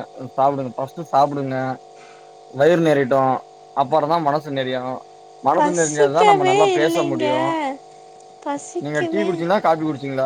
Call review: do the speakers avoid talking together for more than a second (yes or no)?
no